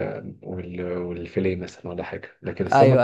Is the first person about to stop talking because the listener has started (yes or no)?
no